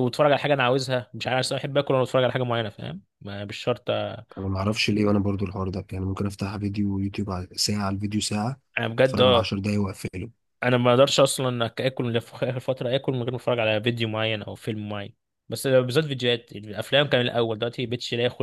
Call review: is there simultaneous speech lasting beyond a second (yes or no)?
no